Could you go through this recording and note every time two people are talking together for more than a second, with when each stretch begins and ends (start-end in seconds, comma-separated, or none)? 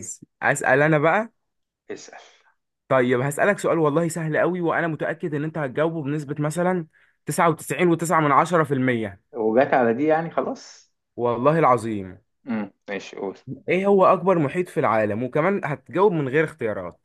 none